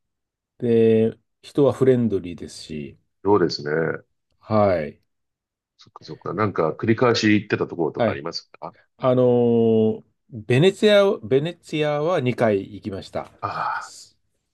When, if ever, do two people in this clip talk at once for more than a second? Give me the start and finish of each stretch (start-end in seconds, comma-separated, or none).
none